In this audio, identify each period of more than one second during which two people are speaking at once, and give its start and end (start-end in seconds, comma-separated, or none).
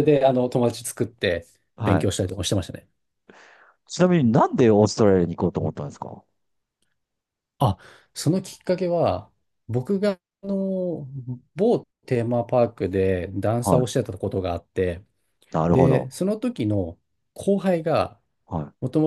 none